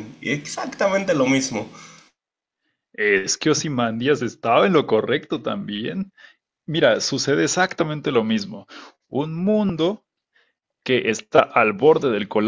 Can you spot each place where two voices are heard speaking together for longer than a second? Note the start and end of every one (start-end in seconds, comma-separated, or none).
none